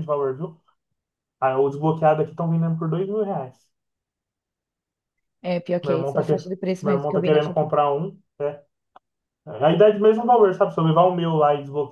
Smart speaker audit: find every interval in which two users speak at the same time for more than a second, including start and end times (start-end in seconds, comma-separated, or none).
5.8-7.7